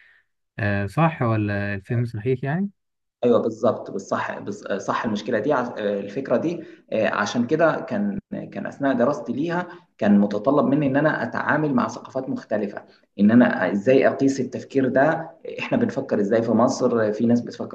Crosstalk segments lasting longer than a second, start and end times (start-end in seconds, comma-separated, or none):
none